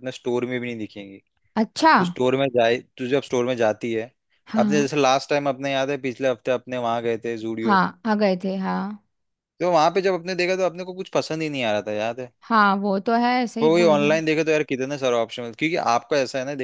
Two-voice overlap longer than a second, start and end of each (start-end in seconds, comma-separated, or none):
none